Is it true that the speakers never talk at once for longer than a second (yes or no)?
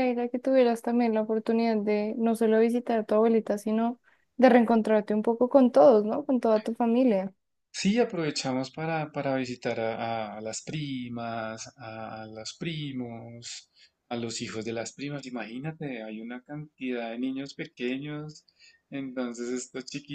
yes